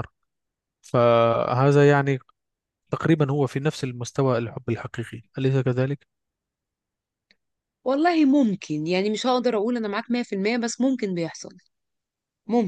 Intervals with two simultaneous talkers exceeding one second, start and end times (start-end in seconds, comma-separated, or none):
none